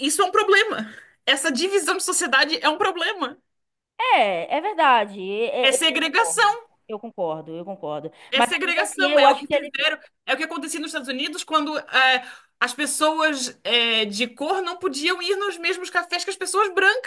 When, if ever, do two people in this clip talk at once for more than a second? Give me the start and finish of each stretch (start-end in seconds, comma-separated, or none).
8.3-9.7